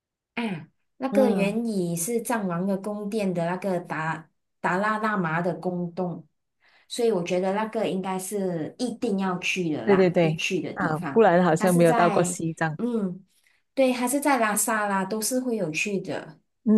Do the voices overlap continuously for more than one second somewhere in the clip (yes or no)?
yes